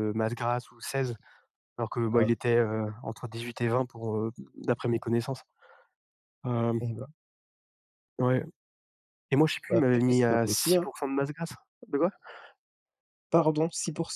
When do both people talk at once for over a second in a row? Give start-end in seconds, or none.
9.7-10.9